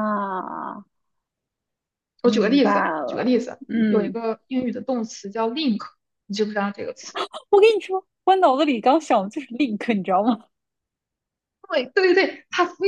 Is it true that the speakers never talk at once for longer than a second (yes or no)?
no